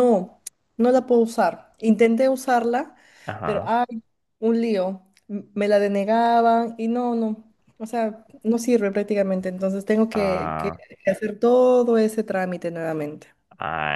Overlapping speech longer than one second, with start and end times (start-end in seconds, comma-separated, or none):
none